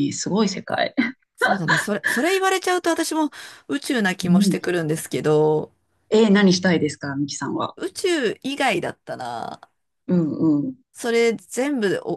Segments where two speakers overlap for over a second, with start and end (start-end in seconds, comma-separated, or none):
none